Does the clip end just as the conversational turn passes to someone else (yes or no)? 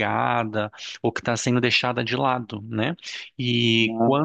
no